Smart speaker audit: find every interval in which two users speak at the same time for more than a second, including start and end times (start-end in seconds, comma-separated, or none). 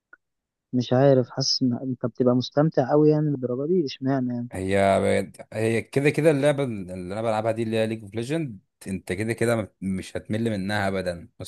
none